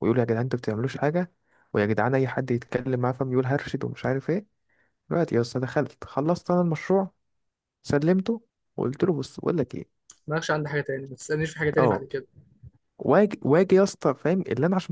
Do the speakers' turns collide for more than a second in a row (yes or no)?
no